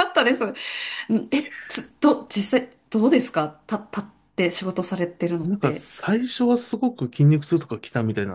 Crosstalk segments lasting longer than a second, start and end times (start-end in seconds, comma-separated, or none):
none